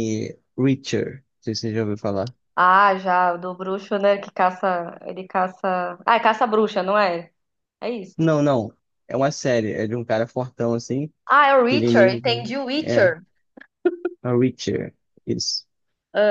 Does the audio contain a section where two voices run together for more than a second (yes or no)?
yes